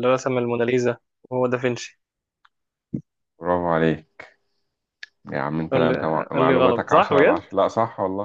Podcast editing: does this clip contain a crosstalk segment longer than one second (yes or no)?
yes